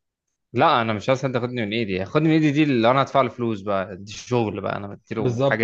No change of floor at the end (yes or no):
no